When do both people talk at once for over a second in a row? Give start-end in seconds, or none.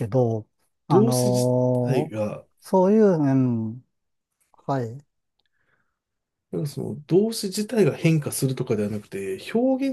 0.9-2.2